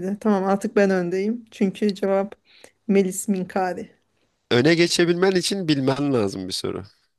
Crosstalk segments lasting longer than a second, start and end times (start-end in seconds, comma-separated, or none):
none